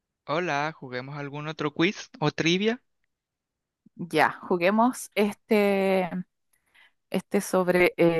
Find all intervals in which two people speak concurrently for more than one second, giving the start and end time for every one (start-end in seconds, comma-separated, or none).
none